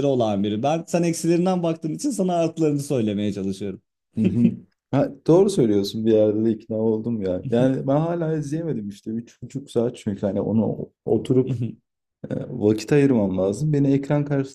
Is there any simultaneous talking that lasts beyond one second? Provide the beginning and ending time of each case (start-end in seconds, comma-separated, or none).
none